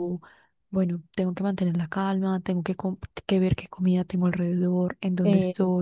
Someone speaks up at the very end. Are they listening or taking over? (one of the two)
listening